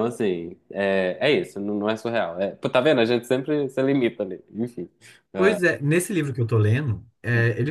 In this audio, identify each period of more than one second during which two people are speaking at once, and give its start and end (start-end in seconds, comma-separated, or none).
none